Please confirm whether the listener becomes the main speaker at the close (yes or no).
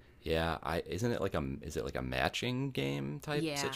yes